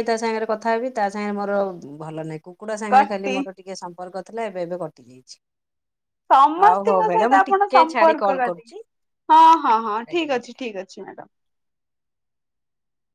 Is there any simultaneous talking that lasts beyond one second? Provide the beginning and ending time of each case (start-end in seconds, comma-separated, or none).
6.6-8.7